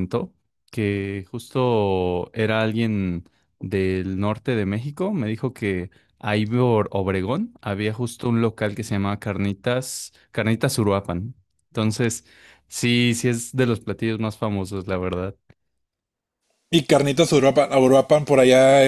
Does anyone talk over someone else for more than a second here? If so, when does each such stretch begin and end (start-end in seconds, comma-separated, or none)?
none